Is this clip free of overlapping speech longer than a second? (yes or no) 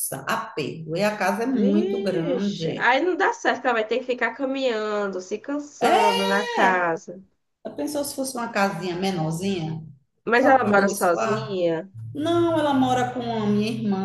no